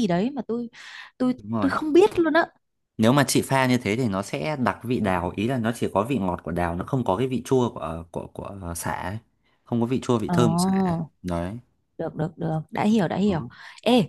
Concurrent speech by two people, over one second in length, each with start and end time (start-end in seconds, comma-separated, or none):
none